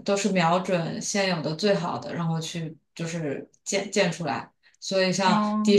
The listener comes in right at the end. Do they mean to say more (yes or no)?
no